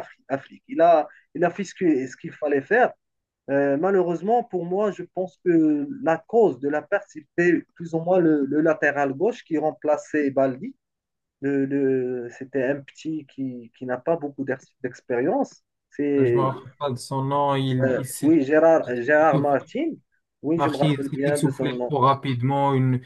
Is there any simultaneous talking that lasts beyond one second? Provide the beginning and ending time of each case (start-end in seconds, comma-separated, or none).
20.6-22.0